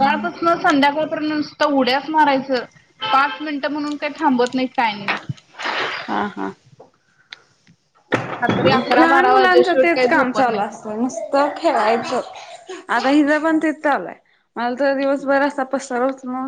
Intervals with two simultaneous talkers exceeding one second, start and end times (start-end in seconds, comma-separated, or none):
8.4-10.7